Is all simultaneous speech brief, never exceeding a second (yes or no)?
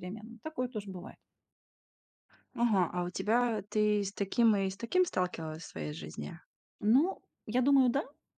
yes